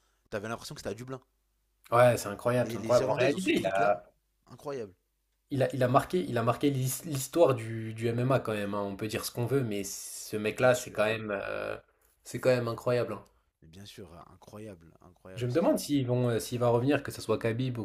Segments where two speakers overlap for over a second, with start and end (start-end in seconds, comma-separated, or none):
2.6-4.0